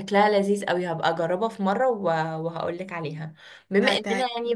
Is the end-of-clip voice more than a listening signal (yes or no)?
no